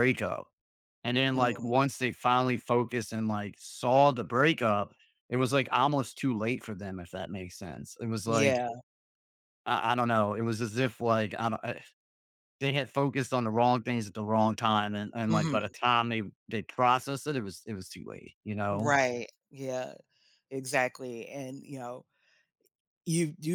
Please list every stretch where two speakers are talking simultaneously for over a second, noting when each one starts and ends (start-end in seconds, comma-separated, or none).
none